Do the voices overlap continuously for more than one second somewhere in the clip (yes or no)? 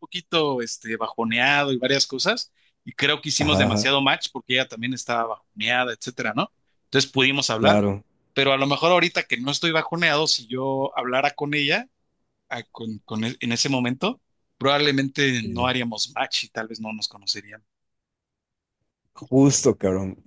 no